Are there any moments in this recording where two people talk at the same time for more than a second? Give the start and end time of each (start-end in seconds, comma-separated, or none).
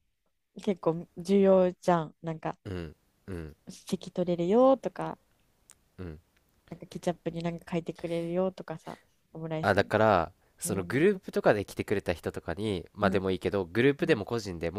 none